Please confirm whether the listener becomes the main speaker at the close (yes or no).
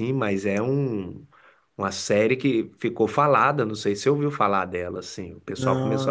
no